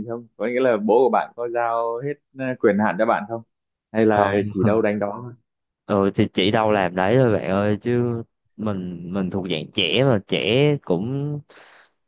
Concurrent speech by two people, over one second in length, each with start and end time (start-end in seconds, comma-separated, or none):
none